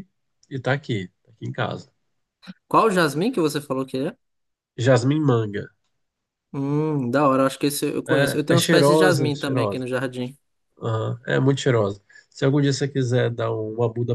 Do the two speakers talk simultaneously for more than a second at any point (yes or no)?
yes